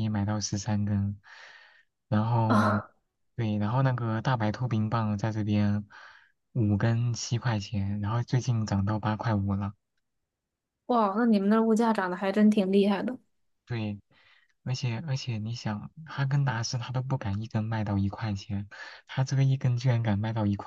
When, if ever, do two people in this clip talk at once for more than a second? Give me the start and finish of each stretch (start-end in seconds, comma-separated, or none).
none